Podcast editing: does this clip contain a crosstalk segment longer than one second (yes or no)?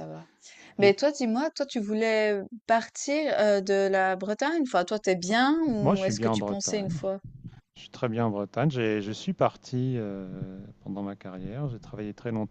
yes